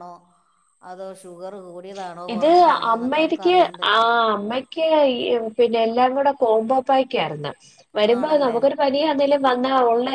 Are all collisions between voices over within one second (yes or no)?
yes